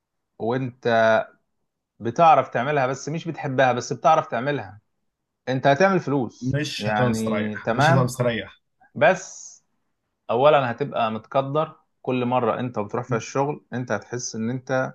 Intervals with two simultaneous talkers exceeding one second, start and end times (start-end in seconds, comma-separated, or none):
6.4-8.1